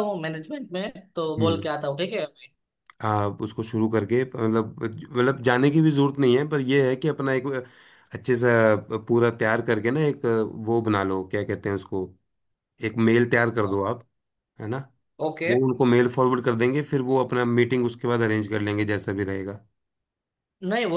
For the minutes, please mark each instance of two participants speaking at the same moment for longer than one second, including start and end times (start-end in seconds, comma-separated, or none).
none